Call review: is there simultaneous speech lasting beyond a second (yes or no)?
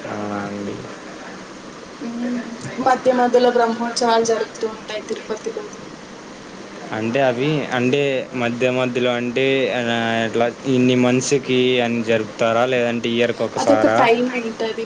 no